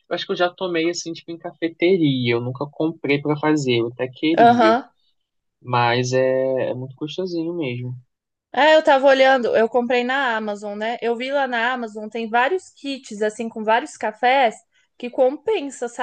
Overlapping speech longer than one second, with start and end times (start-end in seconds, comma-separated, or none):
none